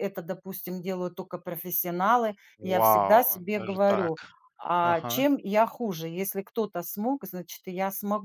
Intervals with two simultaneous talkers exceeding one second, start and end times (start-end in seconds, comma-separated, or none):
2.7-4.1